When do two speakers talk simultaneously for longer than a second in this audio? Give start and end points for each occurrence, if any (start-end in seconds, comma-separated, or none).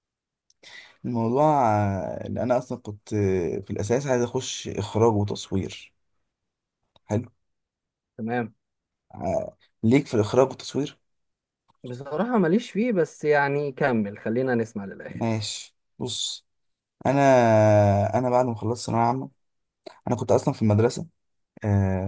none